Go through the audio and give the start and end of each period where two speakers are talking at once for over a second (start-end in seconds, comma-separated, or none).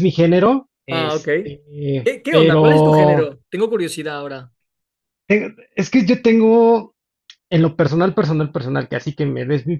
2.0-3.3